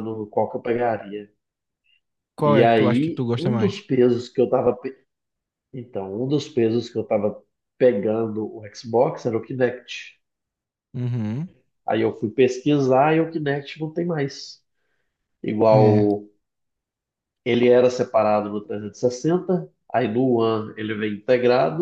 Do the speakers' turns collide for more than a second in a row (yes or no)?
yes